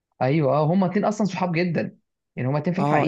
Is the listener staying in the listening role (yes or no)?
no